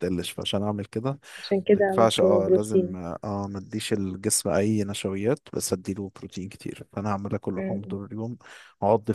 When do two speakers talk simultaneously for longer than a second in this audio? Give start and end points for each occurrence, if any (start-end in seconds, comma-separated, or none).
1.7-3.0